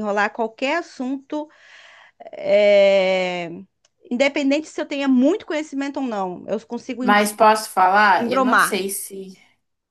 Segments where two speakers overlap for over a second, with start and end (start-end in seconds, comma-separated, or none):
none